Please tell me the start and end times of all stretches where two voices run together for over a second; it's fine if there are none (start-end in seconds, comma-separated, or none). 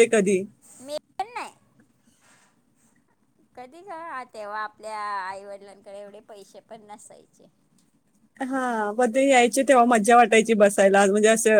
none